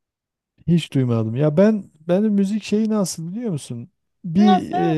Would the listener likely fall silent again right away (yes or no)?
yes